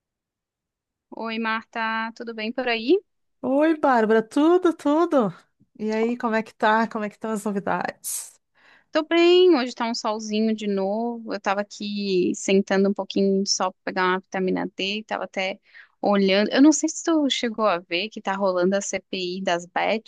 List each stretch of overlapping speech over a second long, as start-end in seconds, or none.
none